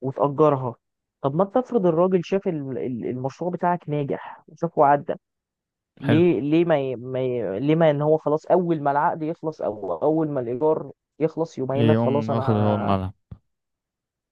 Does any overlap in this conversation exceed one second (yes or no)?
yes